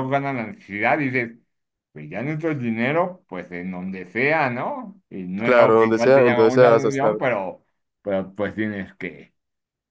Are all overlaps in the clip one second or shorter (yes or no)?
no